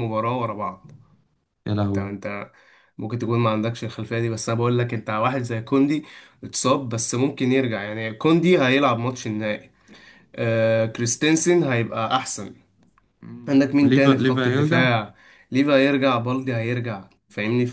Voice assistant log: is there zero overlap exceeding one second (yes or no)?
no